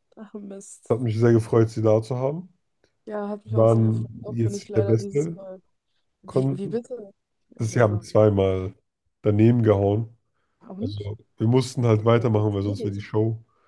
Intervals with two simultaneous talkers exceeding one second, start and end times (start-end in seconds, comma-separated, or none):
3.5-5.4, 11.7-13.1